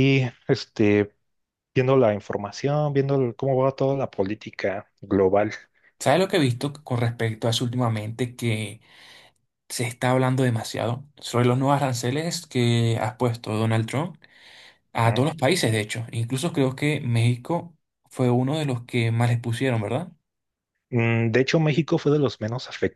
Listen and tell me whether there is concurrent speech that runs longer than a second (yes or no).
no